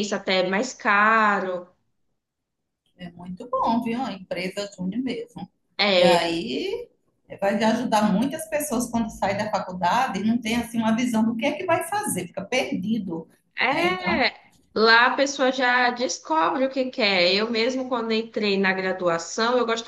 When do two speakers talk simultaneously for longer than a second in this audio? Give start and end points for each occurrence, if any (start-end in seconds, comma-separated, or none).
none